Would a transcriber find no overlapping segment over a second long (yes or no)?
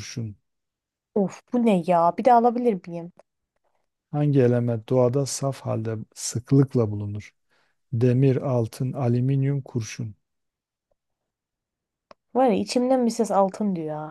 yes